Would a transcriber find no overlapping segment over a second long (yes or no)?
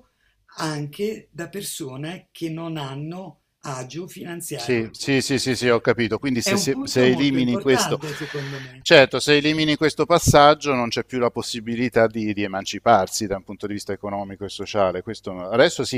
no